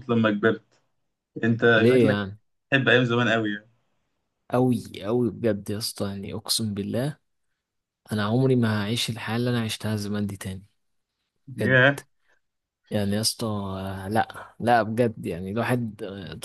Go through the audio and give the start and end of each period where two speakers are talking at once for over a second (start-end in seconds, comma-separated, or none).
none